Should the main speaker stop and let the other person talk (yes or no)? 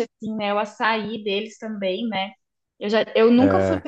no